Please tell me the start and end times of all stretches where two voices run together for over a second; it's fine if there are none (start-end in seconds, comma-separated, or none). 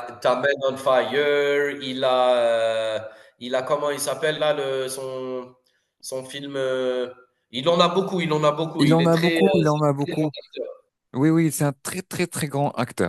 8.8-10.3